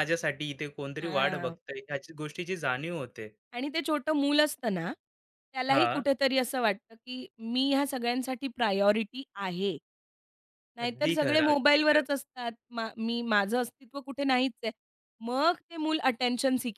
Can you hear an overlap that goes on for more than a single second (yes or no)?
yes